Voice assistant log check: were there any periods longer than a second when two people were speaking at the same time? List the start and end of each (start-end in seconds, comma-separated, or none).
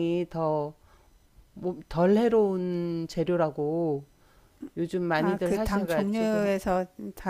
5.2-6.5